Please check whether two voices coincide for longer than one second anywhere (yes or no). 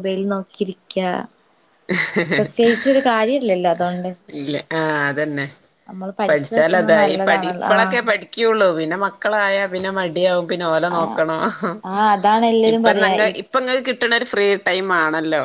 yes